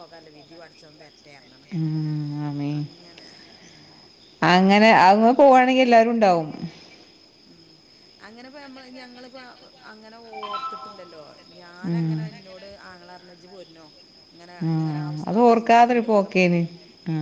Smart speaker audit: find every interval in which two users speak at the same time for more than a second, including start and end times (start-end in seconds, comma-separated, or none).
14.7-16.6